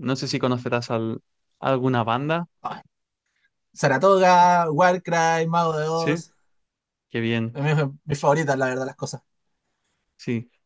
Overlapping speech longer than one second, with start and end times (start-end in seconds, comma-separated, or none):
none